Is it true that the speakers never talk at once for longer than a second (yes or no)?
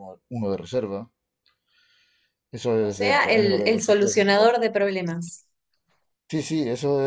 no